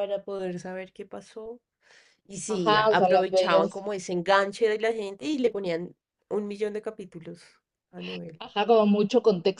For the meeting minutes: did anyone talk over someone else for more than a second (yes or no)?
yes